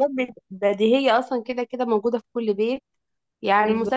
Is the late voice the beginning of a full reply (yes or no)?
no